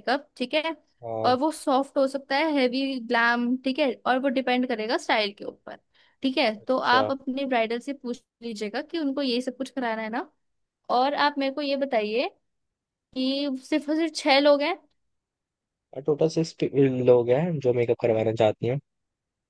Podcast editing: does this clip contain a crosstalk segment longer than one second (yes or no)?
no